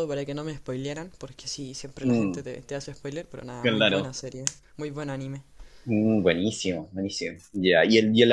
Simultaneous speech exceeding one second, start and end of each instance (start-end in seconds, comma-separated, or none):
none